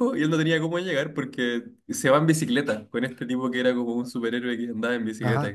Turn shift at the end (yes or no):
yes